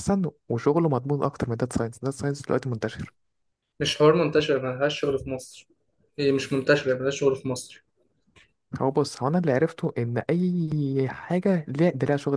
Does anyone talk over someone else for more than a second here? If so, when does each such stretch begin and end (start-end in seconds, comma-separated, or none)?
none